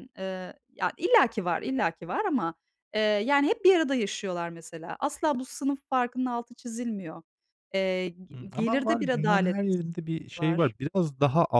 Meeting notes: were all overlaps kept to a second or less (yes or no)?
no